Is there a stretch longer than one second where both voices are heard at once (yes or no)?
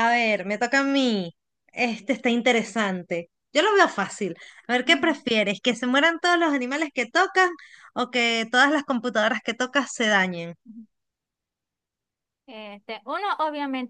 no